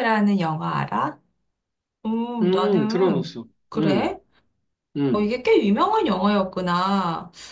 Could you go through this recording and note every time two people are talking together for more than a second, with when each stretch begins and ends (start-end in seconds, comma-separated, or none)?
2.4-4.2